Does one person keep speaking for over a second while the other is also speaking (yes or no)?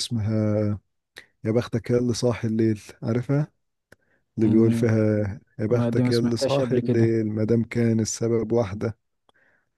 yes